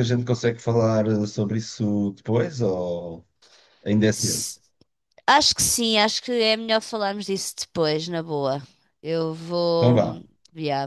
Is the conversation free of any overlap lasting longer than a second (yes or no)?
yes